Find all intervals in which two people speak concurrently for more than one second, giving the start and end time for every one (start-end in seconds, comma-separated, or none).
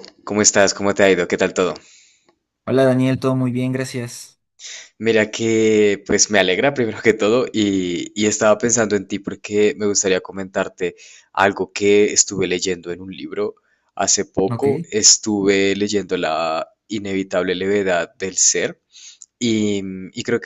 none